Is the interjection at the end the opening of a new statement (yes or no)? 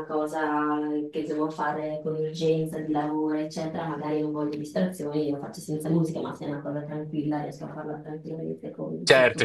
yes